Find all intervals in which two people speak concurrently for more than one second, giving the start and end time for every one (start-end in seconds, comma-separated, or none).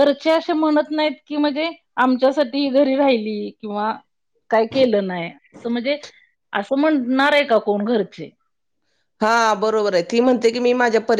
none